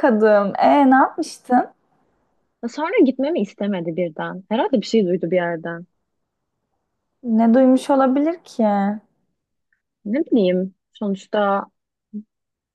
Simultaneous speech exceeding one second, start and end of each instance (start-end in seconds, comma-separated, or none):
none